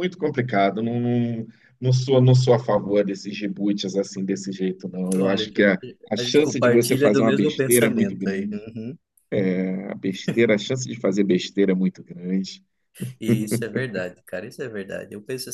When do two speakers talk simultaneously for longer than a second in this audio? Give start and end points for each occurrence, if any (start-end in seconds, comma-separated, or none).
6.2-8.7